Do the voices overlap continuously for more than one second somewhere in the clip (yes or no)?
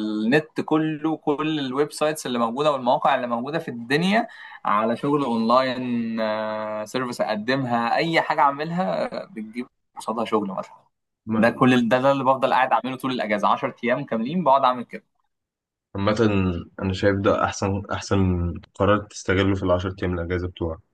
no